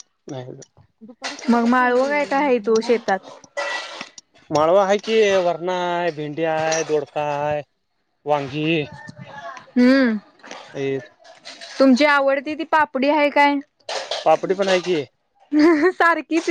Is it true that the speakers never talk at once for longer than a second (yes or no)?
no